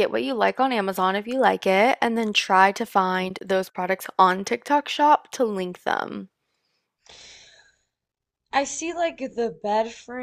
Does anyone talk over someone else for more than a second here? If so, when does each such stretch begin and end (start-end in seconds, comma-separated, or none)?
none